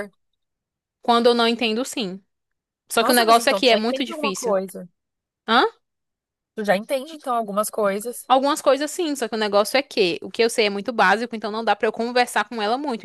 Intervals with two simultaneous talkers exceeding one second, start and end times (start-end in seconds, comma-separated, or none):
3.0-4.6